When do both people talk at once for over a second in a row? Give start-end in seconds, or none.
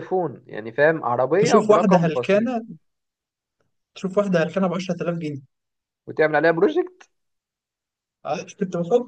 1.4-2.6